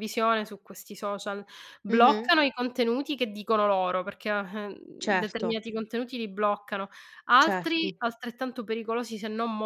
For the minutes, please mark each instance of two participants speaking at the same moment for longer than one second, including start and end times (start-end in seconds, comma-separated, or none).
none